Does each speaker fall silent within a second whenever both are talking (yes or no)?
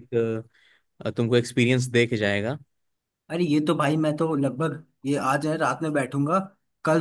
yes